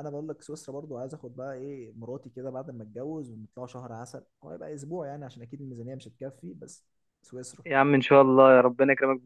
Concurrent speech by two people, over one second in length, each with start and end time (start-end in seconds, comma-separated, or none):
none